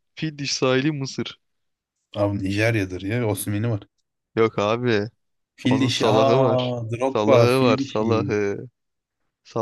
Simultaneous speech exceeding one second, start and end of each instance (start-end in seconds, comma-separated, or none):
5.6-8.1